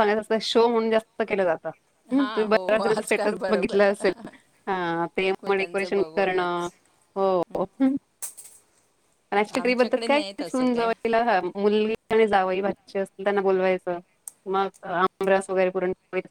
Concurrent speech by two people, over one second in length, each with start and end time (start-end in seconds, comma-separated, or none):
2.1-3.9, 5.3-6.7, 9.5-10.9